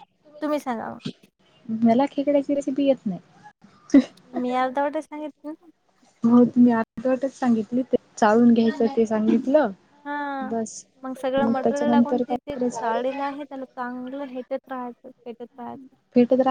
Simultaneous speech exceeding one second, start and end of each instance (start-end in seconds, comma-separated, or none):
11.6-13.2